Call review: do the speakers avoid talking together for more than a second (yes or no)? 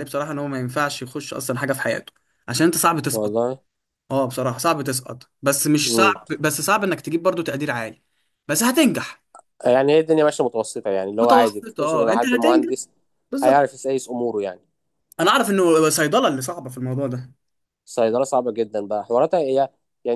no